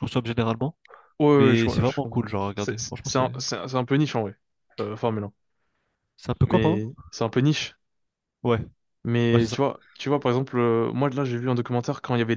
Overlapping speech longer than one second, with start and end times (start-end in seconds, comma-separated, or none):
1.3-3.3